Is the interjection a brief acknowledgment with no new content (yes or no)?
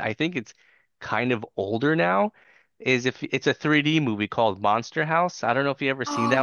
no